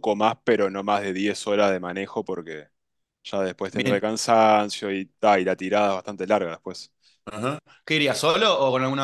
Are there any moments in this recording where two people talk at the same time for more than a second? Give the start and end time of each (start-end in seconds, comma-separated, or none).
none